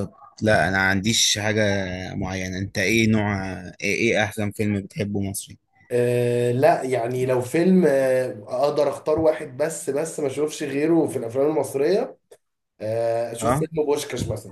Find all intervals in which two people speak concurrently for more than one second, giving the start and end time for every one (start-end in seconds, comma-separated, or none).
none